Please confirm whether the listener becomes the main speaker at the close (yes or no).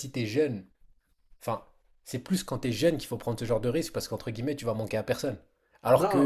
no